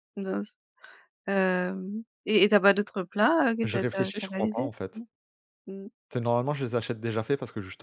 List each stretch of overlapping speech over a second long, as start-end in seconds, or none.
3.6-5.0